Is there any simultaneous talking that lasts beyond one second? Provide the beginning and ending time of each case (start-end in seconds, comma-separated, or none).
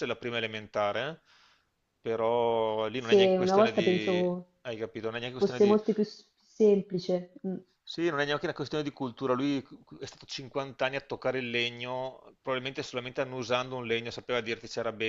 3.0-4.5